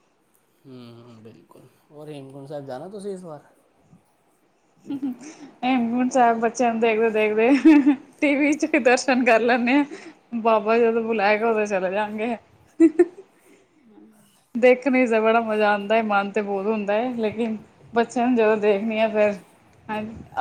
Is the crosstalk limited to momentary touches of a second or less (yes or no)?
yes